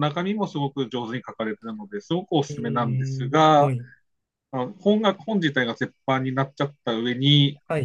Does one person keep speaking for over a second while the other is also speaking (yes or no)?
yes